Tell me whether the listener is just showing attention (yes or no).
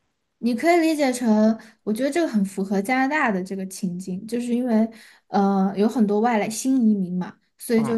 yes